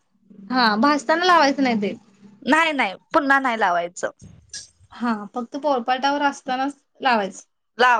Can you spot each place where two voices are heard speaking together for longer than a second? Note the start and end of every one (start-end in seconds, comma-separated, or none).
none